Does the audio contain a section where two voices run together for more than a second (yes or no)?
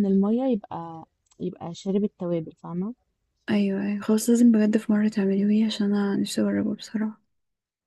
no